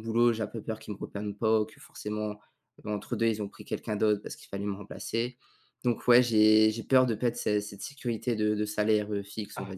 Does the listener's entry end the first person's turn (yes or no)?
yes